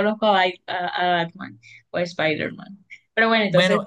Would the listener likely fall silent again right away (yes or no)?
no